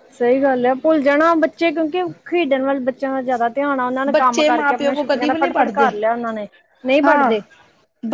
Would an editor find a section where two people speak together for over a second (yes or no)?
yes